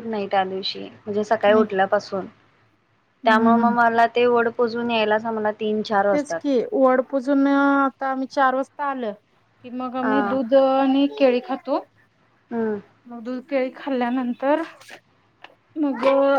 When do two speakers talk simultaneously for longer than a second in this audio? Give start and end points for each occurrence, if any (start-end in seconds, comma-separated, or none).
none